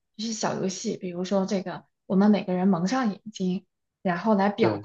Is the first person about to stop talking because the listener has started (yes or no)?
no